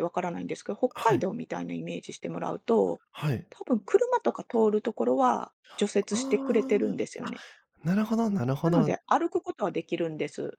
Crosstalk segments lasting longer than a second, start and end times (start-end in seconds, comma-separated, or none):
6.1-7.3